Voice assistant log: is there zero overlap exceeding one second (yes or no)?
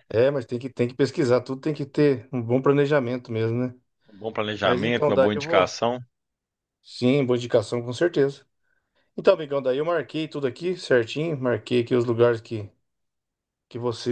no